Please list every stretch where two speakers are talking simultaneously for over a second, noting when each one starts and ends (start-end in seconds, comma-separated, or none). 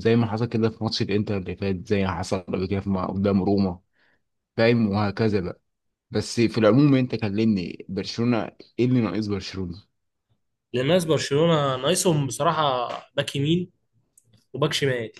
none